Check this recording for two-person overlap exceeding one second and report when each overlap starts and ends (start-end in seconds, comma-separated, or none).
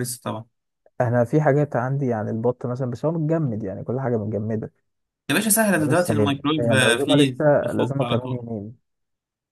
5.8-8.4